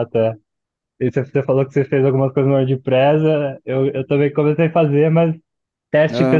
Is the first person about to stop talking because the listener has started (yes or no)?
no